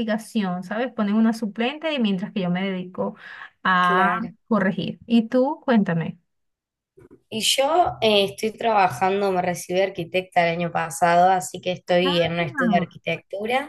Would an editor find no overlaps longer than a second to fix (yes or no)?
yes